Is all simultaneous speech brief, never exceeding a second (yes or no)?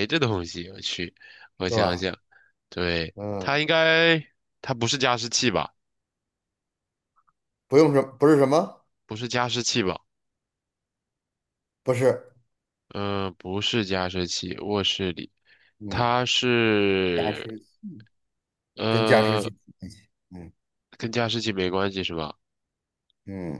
yes